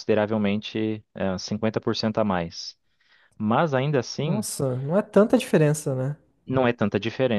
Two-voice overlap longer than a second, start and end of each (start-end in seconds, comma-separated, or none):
none